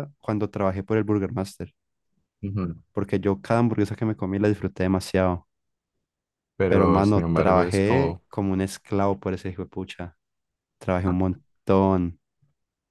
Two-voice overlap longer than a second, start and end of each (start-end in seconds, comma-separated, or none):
6.7-8.2